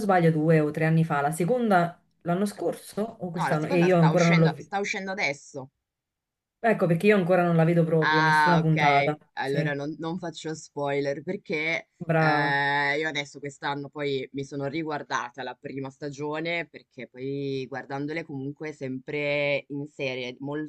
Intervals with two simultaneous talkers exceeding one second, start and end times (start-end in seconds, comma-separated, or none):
3.4-4.7, 8.0-9.7